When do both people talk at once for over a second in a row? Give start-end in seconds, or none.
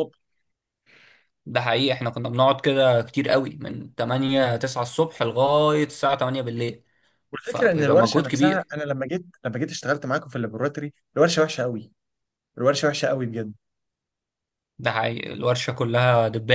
7.4-8.7